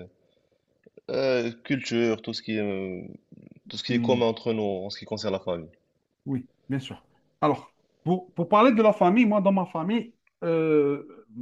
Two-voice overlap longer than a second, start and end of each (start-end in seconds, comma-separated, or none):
none